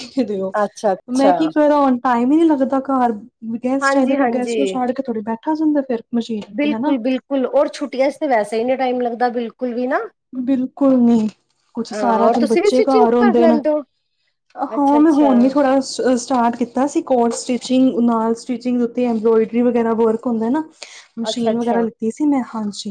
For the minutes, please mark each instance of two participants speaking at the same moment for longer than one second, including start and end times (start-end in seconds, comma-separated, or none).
11.9-13.6